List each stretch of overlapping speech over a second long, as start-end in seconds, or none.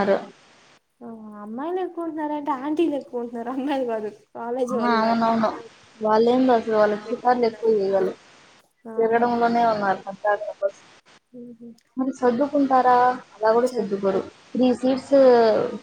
none